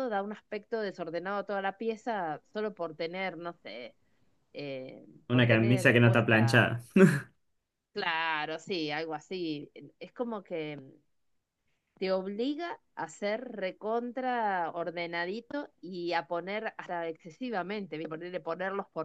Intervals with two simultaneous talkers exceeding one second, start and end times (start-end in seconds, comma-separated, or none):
5.3-6.6